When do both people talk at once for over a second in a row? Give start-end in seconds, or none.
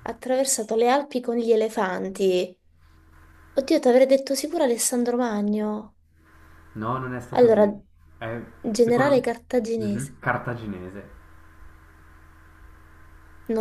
8.8-10.2